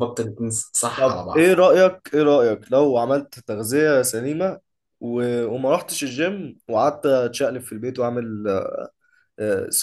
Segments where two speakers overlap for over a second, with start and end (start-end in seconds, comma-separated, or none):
none